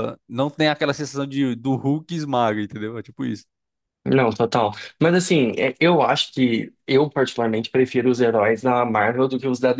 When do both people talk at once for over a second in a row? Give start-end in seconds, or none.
none